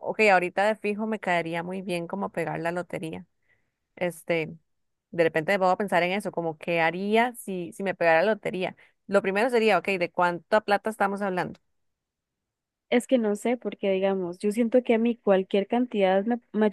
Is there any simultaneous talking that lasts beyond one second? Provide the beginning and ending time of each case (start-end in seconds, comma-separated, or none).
none